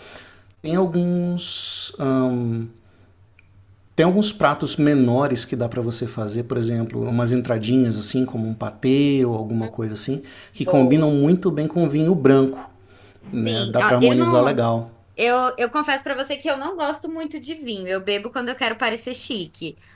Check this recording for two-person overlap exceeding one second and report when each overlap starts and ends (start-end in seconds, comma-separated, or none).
13.3-14.6